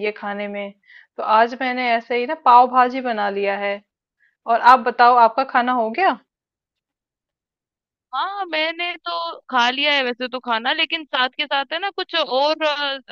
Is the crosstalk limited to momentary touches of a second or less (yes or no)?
yes